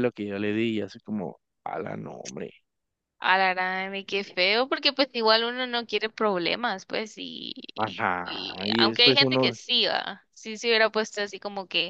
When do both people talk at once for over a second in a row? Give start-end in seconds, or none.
8.2-9.5